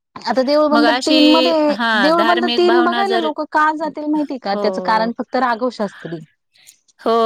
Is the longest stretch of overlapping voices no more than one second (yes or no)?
no